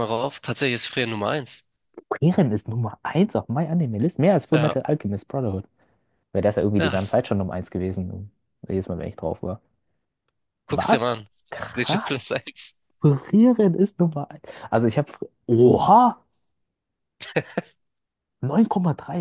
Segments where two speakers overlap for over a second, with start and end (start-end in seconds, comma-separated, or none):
10.7-12.3